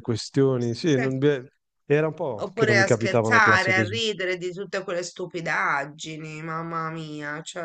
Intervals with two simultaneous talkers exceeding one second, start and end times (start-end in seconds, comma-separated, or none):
2.4-4.0